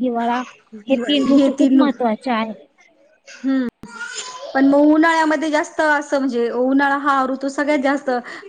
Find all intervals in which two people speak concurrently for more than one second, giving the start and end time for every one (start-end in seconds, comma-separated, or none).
none